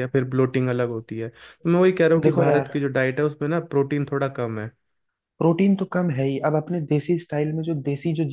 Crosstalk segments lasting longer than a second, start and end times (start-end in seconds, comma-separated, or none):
none